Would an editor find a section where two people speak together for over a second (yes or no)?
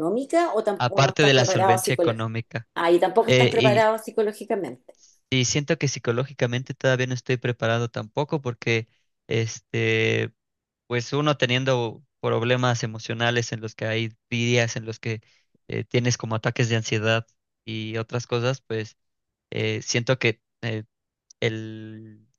yes